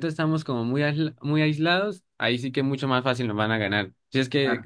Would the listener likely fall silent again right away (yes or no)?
yes